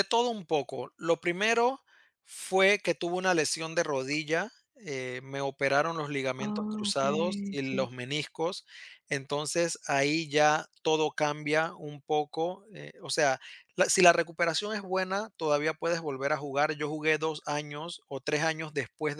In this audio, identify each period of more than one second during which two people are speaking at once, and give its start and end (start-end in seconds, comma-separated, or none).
6.4-7.9